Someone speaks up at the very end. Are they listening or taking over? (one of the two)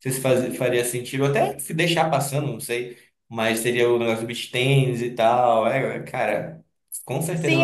taking over